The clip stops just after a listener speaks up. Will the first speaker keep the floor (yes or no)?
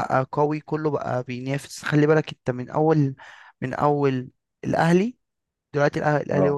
yes